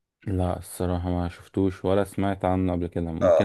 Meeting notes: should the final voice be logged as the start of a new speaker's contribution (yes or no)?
yes